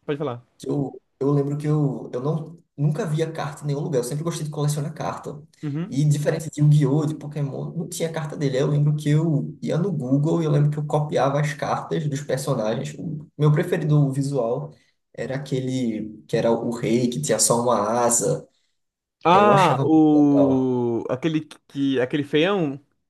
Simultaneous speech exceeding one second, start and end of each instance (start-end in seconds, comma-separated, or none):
19.3-20.7